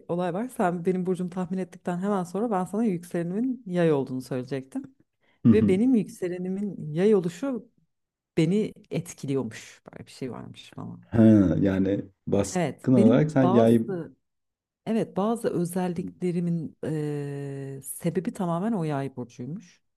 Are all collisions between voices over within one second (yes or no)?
no